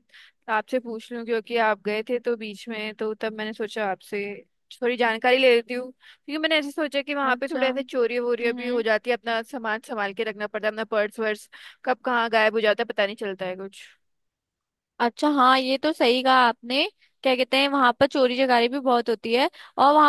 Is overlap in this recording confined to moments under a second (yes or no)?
no